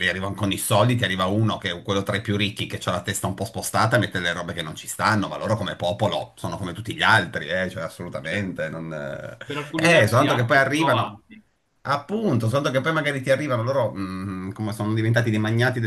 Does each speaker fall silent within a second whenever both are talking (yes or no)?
no